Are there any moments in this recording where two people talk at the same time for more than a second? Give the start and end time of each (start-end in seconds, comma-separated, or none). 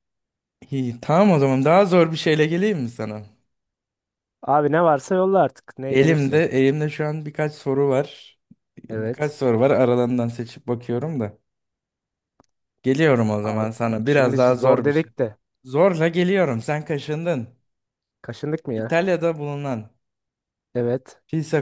13.4-15.1